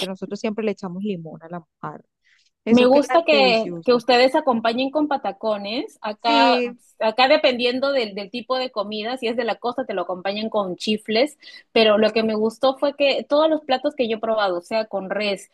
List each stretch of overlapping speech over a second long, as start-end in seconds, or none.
2.7-4.0